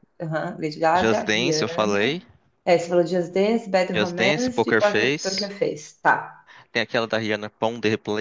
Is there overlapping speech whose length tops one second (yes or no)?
yes